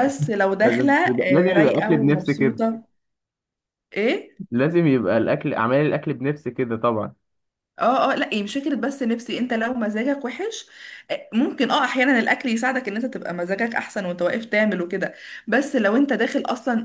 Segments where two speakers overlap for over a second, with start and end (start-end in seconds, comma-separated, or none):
0.6-2.6